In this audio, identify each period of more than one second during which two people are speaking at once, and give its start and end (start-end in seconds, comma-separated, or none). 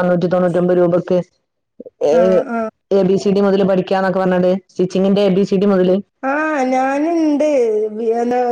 none